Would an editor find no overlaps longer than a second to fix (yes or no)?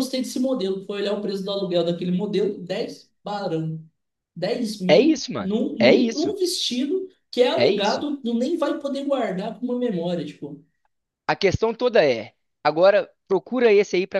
no